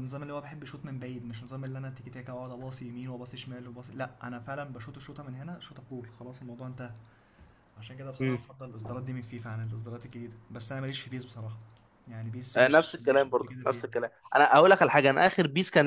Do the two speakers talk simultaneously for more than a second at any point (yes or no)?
yes